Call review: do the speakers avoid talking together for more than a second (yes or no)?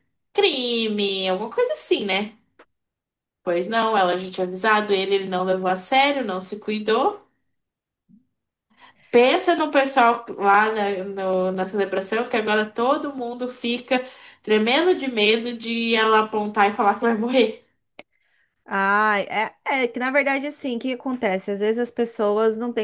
yes